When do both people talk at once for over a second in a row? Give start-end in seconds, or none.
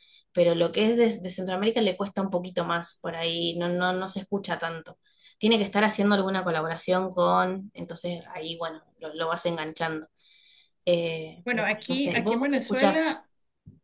11.4-13.1